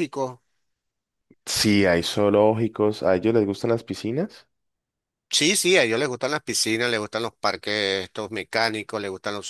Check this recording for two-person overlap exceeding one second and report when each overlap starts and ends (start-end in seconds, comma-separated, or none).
none